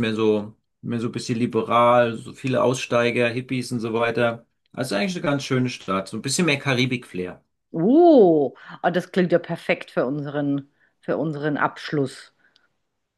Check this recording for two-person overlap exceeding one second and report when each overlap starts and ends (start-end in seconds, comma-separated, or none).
none